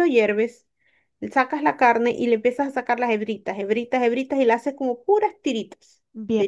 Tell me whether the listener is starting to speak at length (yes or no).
yes